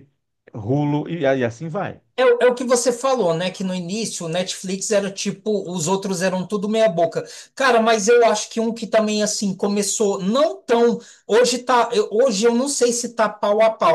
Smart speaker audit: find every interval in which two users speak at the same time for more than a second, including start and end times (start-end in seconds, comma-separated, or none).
none